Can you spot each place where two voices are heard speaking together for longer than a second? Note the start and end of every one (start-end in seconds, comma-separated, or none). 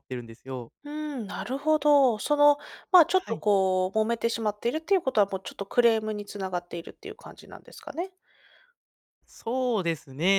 none